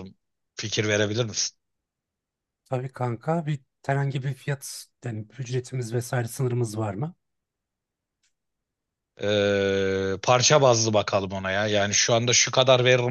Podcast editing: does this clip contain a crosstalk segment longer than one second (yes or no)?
no